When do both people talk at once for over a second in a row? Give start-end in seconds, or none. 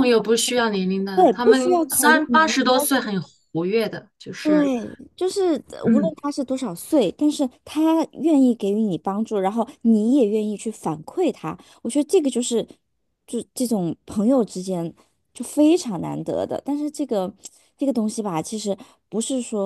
1.1-2.7